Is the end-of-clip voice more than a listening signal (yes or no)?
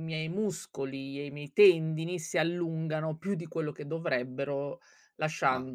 no